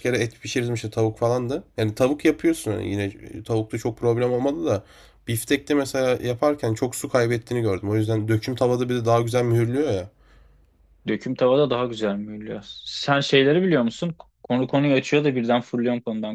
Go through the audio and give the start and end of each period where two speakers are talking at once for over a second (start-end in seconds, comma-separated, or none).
none